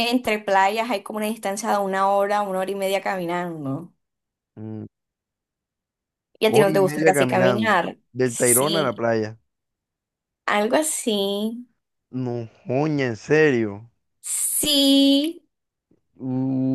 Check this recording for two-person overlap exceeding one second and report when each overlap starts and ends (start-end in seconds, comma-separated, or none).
6.4-9.1